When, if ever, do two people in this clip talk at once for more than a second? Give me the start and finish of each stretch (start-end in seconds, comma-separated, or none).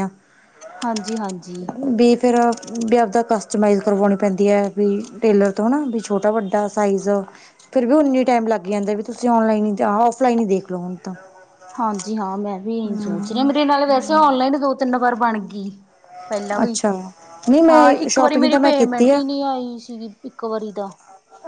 17.7-19.2